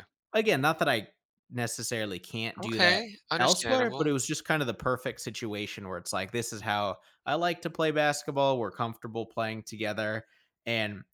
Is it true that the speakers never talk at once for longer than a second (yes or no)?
no